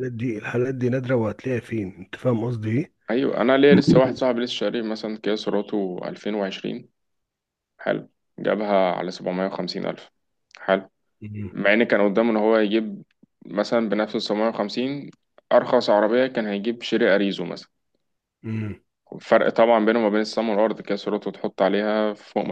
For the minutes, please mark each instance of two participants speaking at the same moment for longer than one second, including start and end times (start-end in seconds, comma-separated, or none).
none